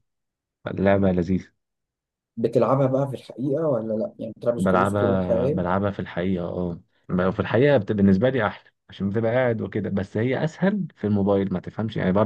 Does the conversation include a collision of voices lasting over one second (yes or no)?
yes